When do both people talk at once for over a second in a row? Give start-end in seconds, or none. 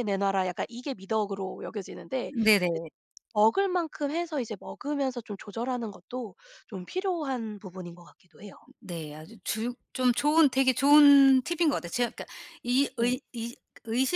none